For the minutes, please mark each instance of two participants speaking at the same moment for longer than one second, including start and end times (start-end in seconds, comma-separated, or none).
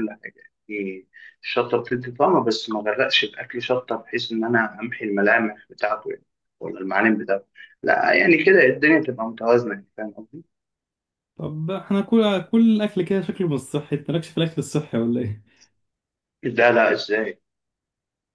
none